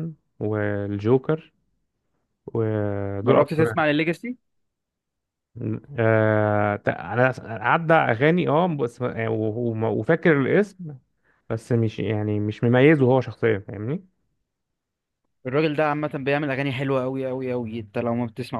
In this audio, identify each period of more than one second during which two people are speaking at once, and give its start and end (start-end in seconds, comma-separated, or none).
none